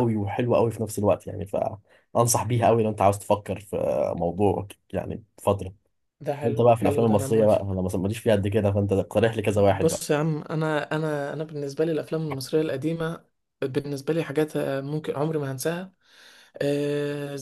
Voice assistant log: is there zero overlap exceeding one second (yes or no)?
no